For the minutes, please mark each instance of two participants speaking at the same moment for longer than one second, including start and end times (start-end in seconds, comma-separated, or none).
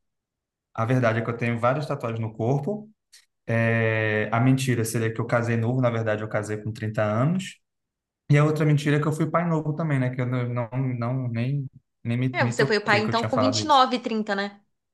12.3-13.8